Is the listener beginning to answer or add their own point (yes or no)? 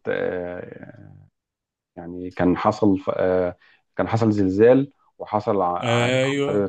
no